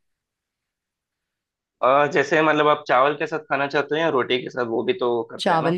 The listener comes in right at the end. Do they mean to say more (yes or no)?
yes